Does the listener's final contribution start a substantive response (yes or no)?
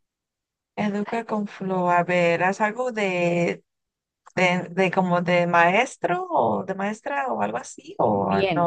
yes